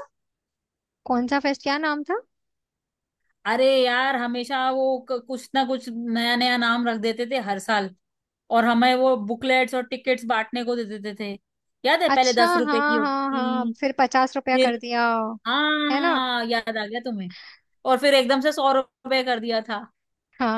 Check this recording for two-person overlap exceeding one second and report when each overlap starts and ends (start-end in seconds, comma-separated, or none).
12.1-13.7